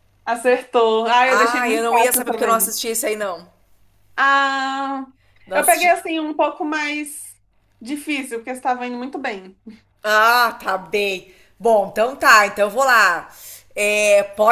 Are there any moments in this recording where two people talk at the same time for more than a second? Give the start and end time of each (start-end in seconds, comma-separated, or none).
1.3-2.8